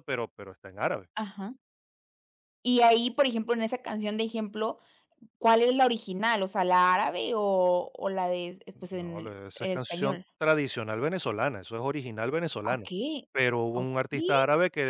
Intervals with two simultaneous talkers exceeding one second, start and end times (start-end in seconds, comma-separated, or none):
8.9-10.2